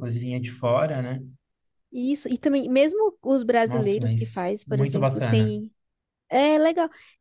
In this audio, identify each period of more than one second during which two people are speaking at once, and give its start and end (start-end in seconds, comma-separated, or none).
3.6-5.5